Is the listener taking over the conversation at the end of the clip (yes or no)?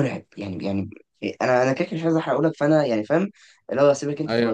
no